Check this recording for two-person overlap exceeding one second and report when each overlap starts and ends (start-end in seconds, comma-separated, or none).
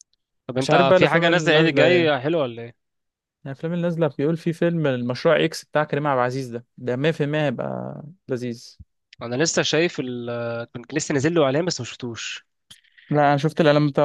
0.6-2.1